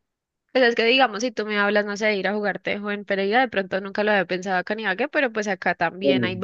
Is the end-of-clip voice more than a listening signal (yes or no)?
no